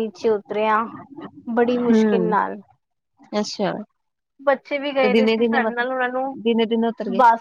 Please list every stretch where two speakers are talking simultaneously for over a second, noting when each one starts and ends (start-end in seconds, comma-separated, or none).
5.0-6.3